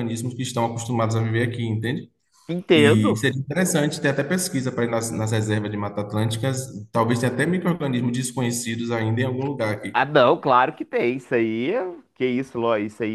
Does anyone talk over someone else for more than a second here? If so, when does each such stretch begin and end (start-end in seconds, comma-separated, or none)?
none